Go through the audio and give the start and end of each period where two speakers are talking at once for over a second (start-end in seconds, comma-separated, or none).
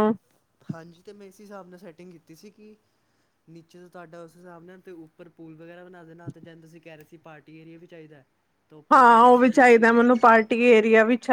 8.9-10.4